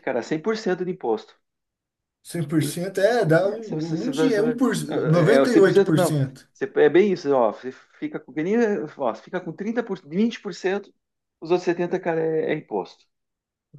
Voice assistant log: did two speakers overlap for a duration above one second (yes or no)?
yes